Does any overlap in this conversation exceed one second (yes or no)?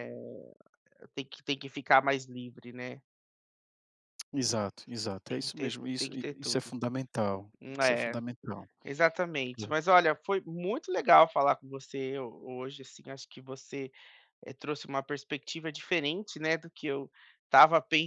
yes